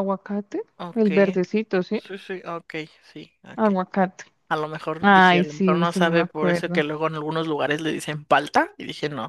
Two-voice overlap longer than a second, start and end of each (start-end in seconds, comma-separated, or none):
5.0-6.8